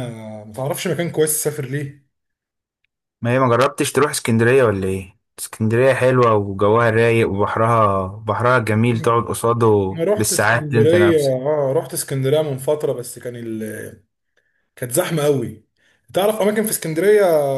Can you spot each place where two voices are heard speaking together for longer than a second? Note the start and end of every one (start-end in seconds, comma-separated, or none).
9.9-11.4